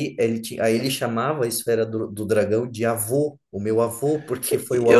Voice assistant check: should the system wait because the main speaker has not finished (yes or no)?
no